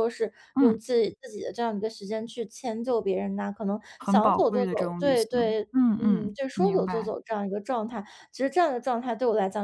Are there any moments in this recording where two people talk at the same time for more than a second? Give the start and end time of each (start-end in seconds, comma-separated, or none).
4.0-7.1